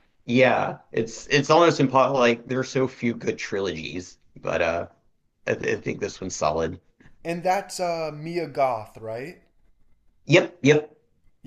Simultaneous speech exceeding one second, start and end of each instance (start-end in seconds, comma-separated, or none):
none